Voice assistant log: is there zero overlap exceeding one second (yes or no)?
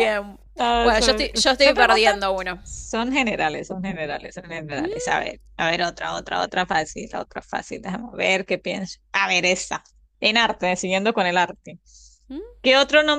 no